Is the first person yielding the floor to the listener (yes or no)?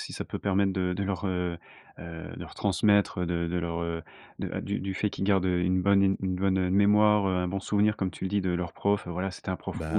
no